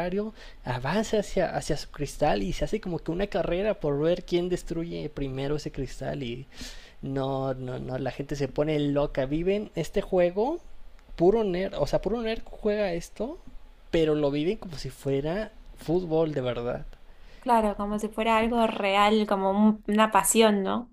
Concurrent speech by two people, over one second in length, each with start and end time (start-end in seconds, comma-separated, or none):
none